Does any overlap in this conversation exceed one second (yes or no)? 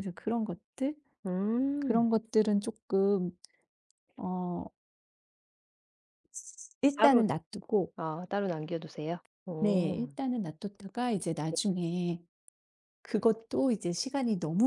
no